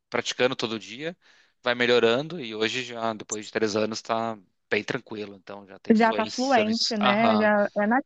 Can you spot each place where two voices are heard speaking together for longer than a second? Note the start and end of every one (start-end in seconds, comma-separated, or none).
5.9-7.5